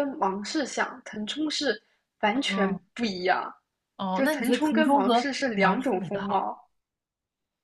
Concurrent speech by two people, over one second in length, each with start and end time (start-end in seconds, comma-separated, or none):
4.1-6.5